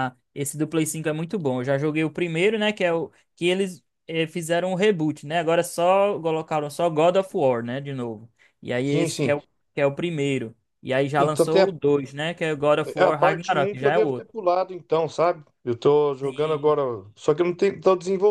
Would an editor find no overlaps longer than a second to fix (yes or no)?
no